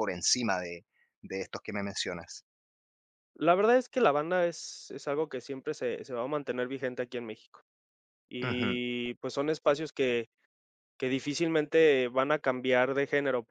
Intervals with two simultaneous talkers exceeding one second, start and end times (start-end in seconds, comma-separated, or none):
none